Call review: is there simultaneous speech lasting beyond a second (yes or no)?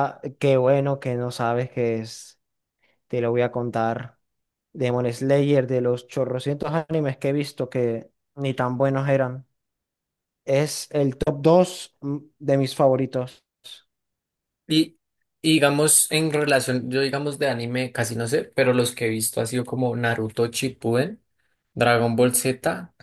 no